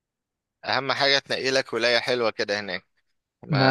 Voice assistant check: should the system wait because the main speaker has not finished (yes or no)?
yes